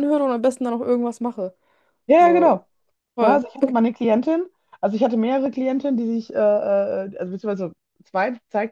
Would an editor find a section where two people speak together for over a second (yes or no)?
no